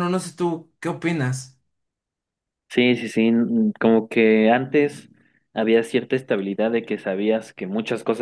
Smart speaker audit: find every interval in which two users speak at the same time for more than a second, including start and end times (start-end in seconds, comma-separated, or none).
none